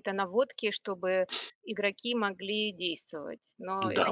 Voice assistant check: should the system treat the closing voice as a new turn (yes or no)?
yes